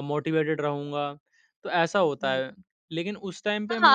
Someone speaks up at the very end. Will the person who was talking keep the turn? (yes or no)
no